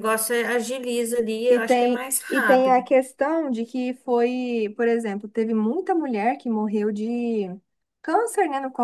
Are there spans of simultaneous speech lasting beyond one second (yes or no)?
yes